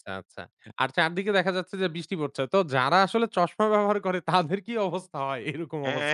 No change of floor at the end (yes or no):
no